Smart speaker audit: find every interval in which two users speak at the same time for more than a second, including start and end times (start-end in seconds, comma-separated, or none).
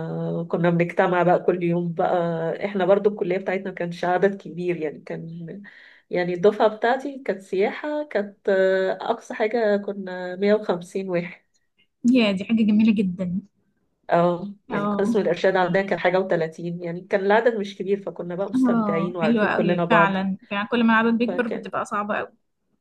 18.5-20.2